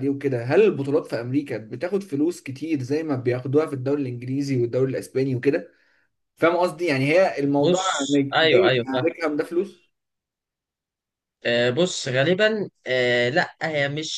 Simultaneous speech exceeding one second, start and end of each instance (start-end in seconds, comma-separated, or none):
7.6-9.1